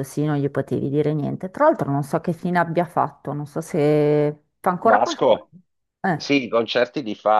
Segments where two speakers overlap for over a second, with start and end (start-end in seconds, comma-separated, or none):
none